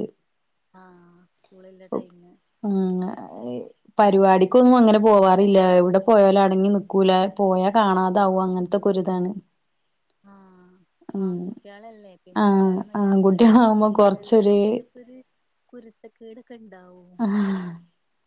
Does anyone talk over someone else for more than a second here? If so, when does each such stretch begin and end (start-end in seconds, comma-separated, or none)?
12.4-14.6